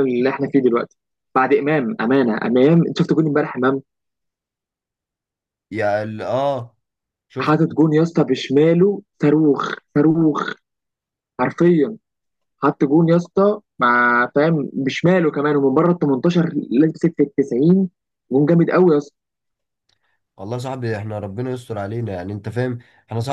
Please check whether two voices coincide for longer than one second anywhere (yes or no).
no